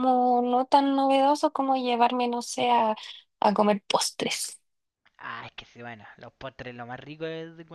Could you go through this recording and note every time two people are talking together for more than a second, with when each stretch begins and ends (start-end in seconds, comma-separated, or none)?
none